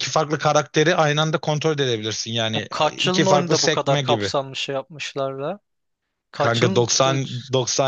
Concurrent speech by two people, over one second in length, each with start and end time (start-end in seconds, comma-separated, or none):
2.5-4.3